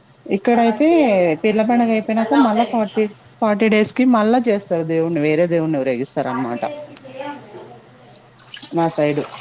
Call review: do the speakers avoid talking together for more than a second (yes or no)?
yes